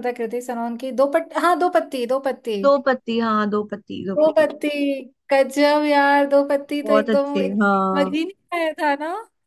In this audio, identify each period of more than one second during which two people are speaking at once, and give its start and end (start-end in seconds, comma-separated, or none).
6.8-8.2